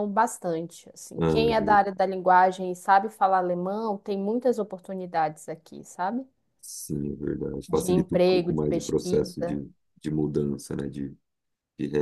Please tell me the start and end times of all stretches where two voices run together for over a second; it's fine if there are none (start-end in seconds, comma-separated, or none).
7.7-9.6